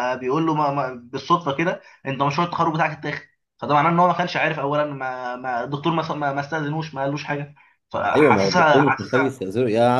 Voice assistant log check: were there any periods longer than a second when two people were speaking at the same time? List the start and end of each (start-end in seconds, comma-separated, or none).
8.2-9.4